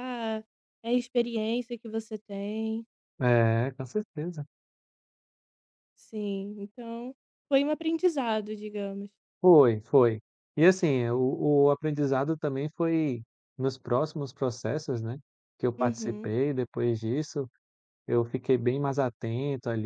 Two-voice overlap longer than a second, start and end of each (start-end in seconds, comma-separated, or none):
none